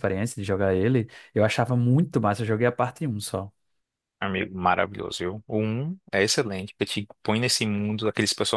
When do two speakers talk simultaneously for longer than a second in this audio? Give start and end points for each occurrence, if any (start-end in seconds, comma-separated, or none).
none